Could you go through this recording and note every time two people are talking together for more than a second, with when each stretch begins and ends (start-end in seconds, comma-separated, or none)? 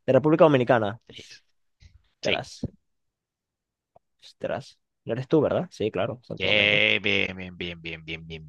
none